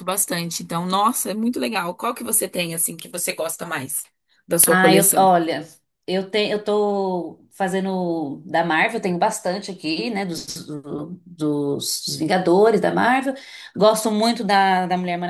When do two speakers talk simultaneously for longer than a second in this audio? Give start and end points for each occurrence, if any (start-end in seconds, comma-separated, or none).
none